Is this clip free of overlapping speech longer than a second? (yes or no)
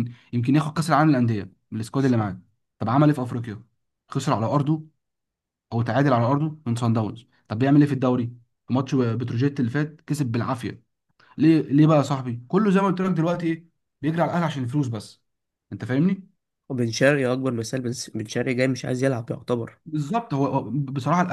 yes